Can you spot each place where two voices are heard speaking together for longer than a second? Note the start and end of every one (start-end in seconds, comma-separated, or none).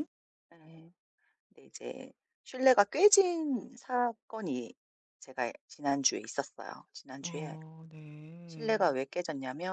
none